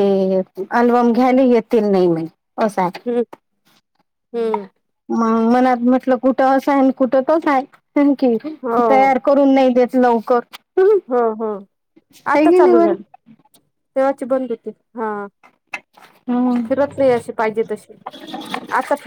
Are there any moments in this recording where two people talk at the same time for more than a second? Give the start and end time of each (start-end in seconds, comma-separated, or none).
none